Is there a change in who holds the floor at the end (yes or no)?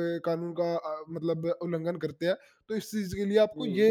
no